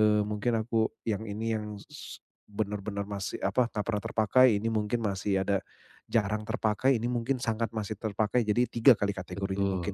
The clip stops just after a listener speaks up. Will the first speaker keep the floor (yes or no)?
no